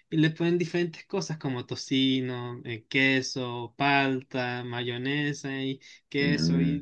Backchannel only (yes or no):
yes